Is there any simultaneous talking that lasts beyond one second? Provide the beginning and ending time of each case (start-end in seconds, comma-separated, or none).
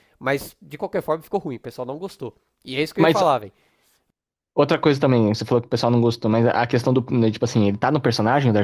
none